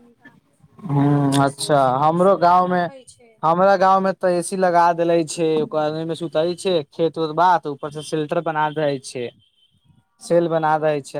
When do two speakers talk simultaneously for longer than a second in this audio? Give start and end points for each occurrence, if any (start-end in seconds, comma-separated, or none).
0.9-2.8